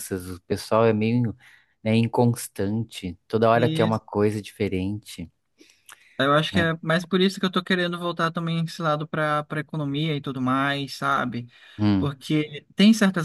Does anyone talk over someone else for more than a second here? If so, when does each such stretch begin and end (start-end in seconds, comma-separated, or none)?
none